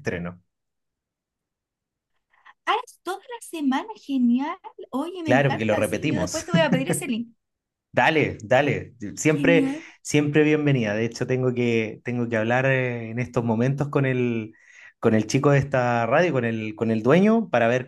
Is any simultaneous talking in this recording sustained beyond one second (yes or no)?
yes